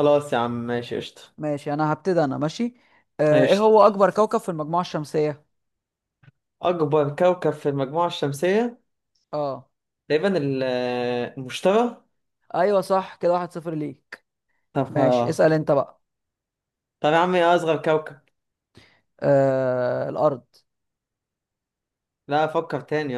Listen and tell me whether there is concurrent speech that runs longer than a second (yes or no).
no